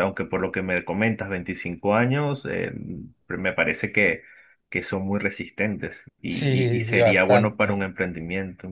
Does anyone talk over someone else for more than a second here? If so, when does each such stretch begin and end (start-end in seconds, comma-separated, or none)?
6.2-7.8